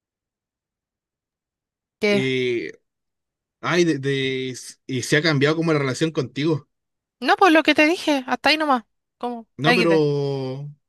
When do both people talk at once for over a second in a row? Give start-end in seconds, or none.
none